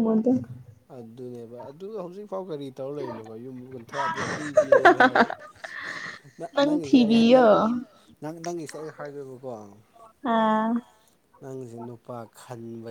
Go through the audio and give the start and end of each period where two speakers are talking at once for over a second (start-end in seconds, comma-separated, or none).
none